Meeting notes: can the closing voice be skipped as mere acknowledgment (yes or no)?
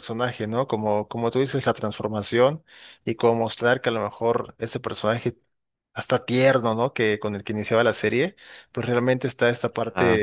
yes